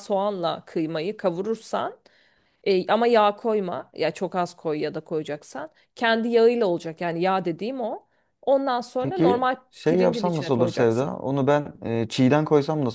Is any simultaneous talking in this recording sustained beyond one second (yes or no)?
yes